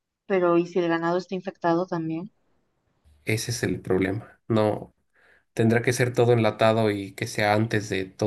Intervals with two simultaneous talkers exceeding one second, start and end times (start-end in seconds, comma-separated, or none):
none